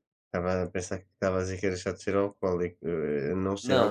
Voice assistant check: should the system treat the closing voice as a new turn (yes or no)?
yes